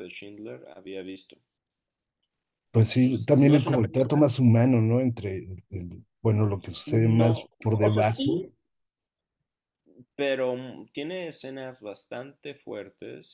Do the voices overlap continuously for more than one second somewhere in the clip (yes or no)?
yes